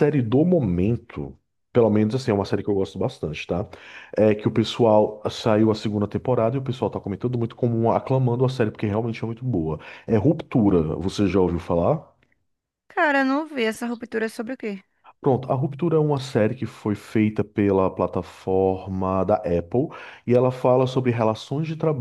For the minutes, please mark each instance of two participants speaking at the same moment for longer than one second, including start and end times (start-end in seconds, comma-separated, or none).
none